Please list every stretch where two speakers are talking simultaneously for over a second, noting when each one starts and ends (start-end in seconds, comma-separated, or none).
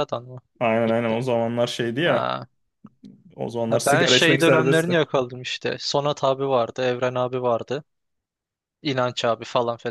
3.7-5.0